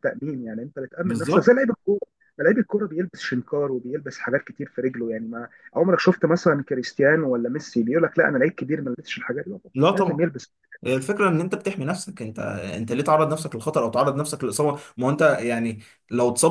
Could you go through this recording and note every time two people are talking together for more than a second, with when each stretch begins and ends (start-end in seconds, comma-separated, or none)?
none